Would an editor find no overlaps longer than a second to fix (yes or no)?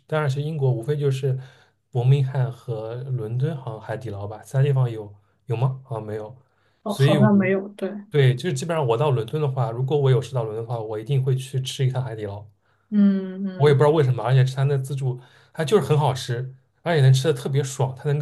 yes